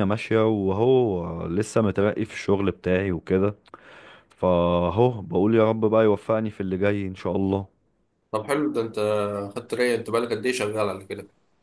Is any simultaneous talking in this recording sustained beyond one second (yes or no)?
no